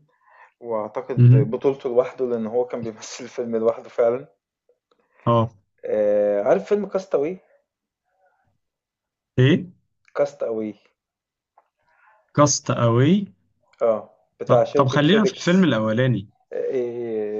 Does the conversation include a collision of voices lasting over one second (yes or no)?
yes